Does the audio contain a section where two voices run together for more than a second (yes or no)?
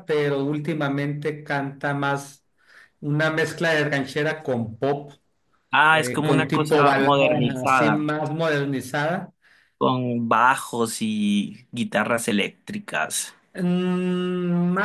yes